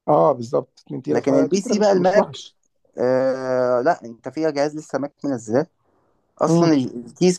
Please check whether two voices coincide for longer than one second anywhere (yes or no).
yes